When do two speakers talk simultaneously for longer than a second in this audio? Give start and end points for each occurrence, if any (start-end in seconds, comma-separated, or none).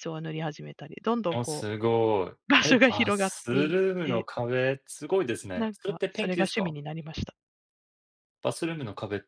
2.6-4.3, 5.5-6.8